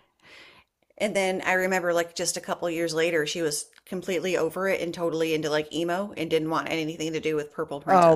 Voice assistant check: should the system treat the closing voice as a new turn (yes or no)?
yes